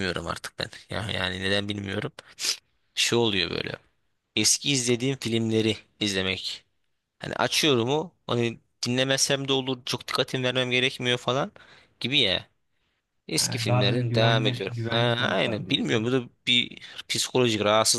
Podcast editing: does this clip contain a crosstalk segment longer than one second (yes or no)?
yes